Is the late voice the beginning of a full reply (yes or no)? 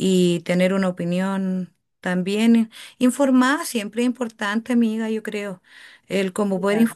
no